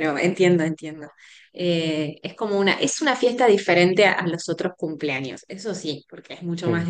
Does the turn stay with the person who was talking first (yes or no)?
yes